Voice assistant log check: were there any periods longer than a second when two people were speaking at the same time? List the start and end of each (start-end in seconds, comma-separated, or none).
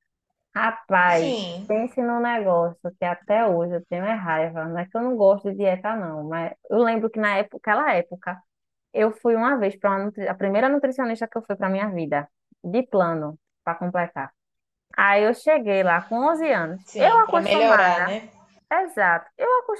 16.8-18.1